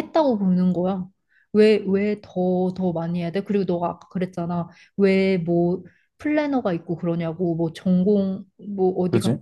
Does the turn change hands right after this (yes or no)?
no